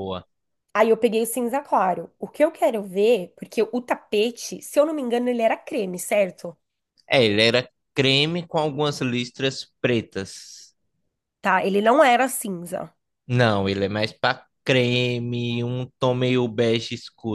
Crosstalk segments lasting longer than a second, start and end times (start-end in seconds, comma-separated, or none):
none